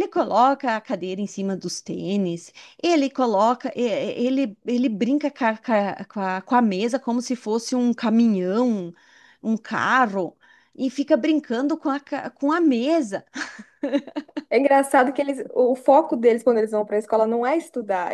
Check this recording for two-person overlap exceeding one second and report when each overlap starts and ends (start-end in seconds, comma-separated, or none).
none